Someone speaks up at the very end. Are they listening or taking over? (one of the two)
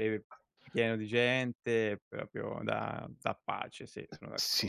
taking over